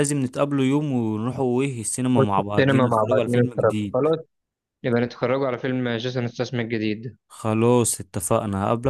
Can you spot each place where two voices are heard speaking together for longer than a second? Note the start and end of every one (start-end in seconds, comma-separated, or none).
2.2-4.1